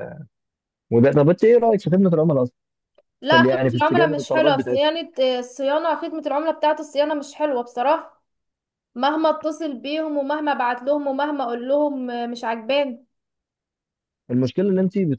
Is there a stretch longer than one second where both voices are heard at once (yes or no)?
yes